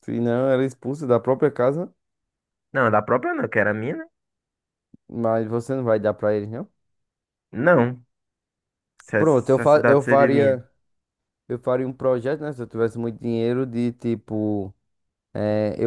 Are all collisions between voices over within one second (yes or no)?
no